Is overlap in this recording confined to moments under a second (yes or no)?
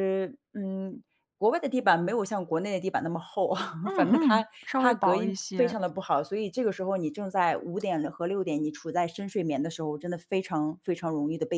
no